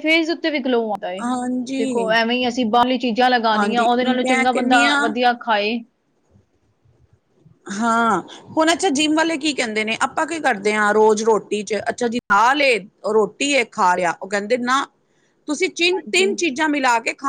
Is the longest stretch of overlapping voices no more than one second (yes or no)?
no